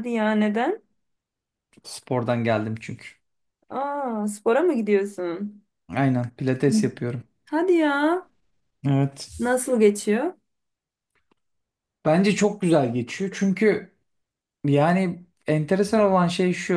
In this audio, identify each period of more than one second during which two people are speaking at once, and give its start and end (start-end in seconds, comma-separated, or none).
none